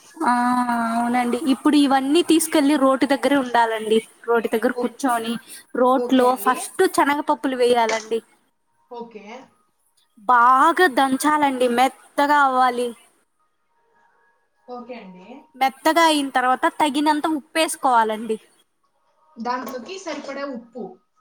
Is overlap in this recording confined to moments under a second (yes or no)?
yes